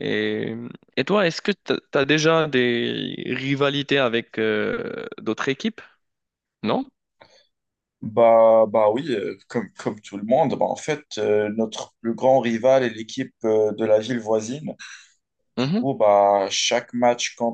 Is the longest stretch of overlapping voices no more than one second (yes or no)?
yes